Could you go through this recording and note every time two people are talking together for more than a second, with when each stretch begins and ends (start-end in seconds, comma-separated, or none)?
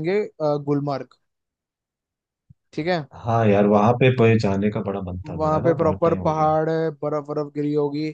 5.2-6.5